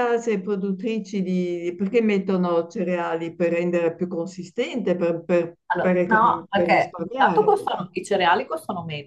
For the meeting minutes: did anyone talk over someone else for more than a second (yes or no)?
yes